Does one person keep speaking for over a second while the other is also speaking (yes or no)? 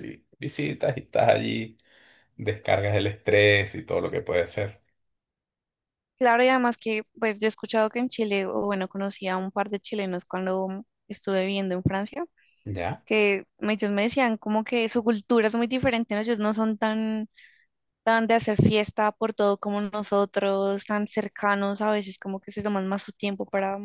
no